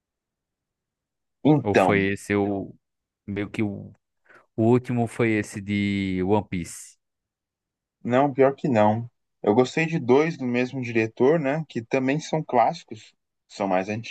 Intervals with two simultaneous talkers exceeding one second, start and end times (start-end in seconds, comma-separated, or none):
none